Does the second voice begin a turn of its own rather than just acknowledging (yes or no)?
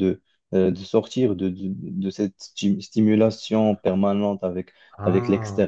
no